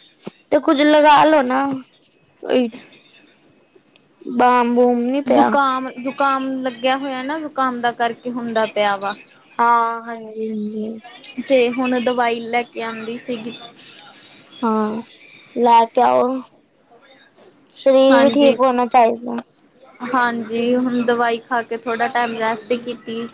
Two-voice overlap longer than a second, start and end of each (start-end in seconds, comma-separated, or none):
none